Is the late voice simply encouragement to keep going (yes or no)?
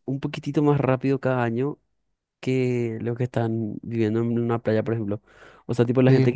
yes